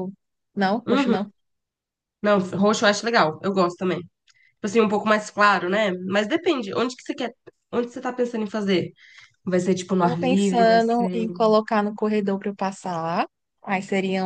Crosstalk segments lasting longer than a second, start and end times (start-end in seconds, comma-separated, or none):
10.0-11.3